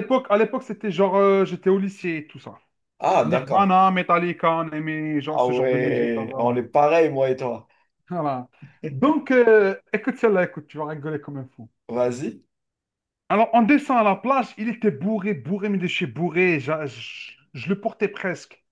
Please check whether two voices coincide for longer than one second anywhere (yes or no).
yes